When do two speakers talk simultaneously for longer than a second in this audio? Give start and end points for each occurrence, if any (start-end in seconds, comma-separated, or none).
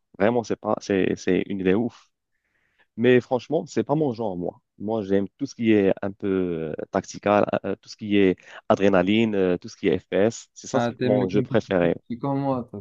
10.7-11.9